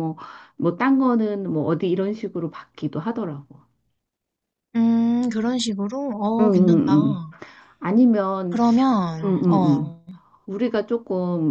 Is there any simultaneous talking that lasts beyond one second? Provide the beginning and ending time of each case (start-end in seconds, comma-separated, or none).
none